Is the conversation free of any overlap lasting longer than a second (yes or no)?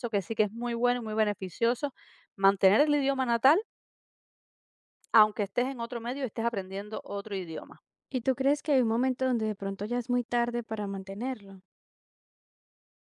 yes